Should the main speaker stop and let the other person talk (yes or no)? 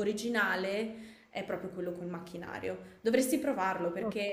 no